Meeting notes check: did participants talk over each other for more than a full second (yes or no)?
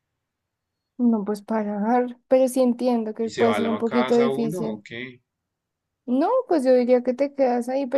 yes